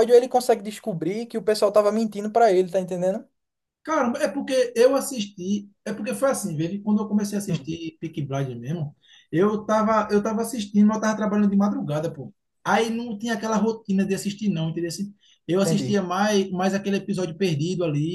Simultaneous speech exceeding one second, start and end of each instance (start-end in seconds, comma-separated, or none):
none